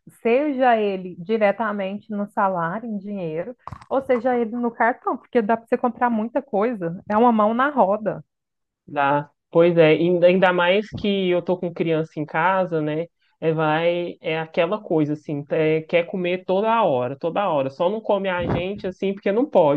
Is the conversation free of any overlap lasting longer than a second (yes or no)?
yes